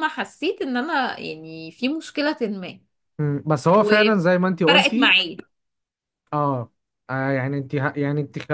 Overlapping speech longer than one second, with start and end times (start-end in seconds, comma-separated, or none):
3.7-5.2